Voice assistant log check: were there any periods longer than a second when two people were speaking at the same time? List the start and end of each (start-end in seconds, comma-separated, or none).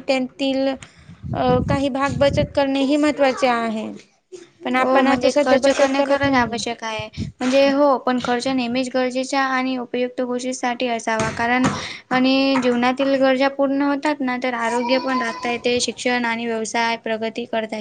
4.8-6.6